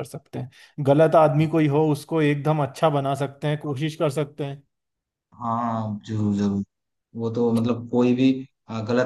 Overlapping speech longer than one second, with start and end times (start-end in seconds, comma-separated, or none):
none